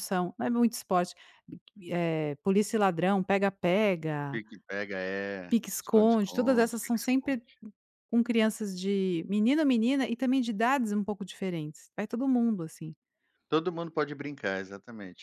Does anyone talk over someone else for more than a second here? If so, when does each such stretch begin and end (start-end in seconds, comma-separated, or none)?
5.5-7.4